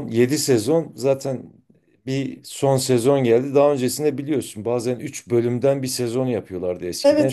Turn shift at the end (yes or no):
no